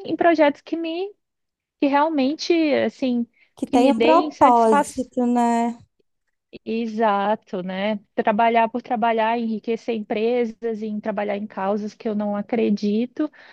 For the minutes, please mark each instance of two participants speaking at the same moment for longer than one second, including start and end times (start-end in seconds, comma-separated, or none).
3.6-5.0